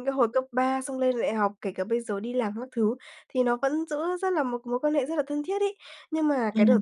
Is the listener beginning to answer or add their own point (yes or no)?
no